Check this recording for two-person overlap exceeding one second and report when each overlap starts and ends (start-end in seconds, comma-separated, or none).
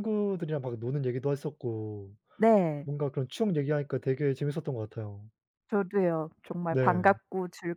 none